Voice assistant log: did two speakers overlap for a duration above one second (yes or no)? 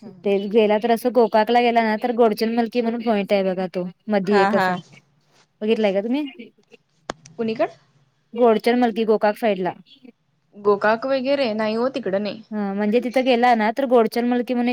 no